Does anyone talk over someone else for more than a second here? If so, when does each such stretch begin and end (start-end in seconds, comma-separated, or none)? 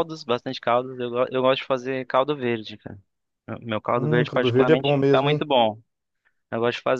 4.0-5.5